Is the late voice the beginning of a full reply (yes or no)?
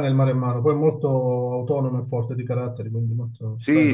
yes